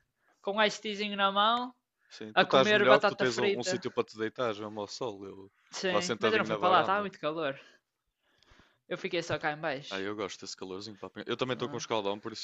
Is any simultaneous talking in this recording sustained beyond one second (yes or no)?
yes